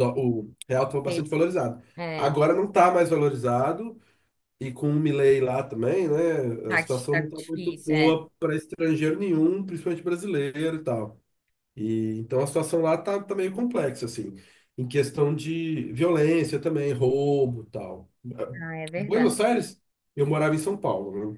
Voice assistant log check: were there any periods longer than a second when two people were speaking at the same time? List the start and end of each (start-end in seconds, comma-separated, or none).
6.7-8.2